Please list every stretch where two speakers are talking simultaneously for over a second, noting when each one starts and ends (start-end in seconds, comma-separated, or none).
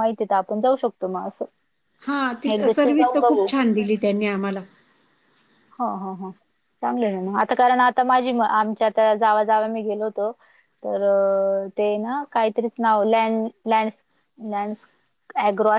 none